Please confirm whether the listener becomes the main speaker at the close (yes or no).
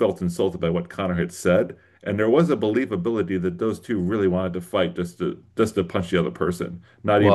yes